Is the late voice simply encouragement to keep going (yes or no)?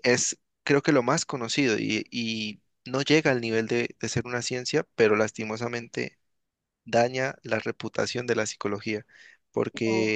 yes